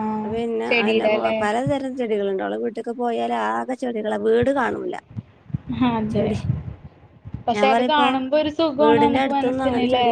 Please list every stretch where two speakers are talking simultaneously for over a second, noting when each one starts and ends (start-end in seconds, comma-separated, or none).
none